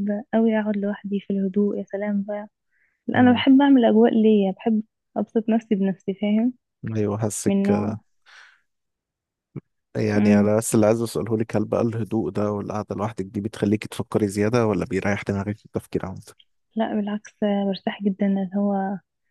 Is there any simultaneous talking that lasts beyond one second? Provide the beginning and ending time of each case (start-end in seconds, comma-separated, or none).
none